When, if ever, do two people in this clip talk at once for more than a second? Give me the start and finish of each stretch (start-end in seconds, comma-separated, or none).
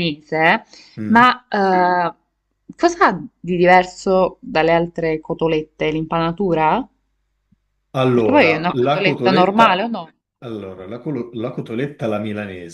8.1-9.9